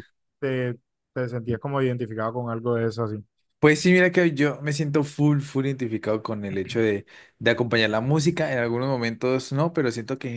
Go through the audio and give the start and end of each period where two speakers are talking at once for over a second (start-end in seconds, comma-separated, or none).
none